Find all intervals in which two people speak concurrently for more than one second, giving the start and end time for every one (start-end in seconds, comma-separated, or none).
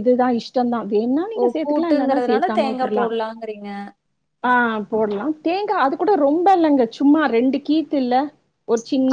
1.4-3.1